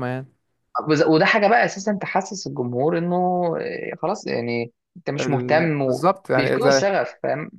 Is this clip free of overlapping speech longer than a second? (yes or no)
no